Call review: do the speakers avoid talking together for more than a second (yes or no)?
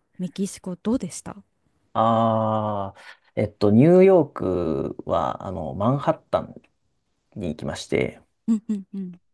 yes